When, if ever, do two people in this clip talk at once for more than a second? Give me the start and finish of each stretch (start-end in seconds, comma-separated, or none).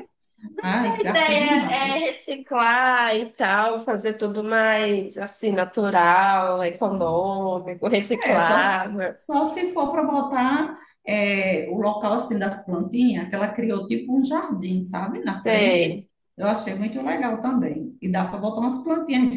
0.6-2.0